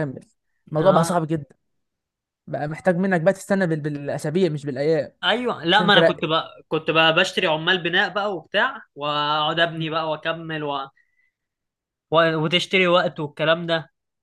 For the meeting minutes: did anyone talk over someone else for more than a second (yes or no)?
no